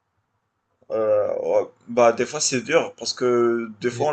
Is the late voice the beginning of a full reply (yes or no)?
no